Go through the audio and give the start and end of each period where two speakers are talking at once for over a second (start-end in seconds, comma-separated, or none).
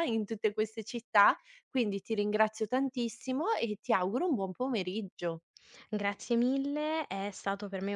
none